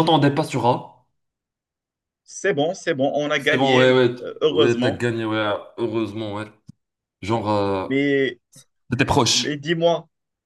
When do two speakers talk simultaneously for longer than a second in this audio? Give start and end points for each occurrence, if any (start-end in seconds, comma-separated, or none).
3.4-5.0